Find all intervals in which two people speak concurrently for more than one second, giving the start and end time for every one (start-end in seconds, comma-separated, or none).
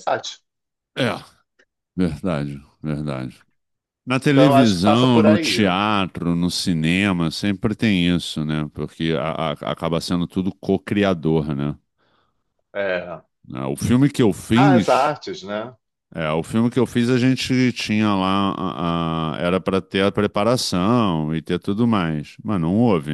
4.2-5.8